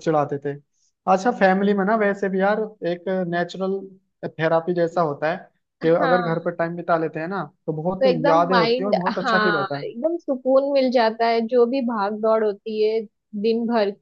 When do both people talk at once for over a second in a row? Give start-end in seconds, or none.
8.0-9.8